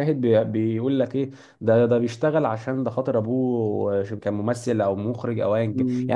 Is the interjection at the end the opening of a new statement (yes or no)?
yes